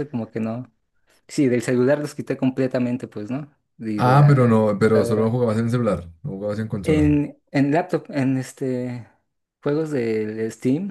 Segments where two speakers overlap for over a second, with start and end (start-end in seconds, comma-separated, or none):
4.0-5.4